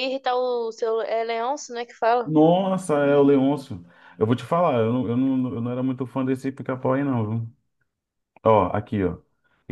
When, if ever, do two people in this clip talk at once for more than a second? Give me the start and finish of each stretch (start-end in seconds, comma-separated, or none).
none